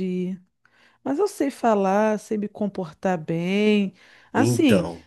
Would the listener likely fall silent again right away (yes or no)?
yes